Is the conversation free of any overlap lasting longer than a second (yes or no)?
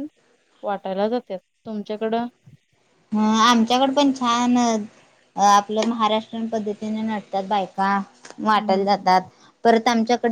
yes